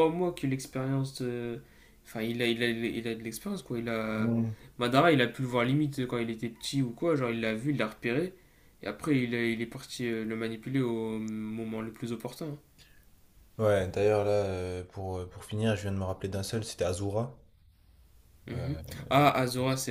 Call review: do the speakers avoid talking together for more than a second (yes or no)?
yes